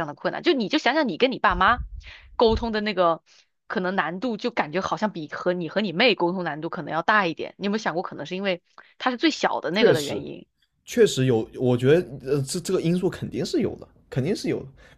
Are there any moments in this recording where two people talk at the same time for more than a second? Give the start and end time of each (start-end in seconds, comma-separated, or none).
none